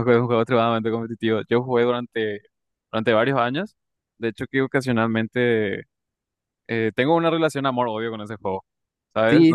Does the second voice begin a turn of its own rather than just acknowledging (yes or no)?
yes